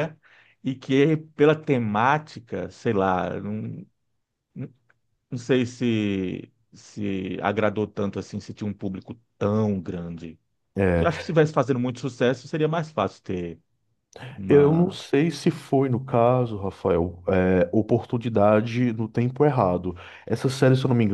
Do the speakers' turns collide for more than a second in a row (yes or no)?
no